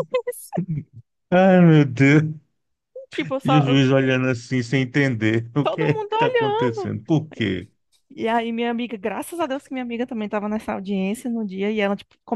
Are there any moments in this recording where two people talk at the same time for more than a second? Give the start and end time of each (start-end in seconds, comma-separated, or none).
5.6-6.9